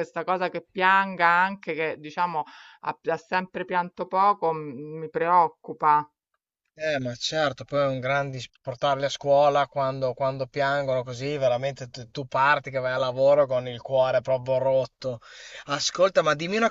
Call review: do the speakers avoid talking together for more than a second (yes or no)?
yes